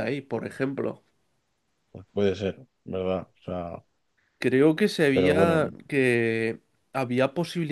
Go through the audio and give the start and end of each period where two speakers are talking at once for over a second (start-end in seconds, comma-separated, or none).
none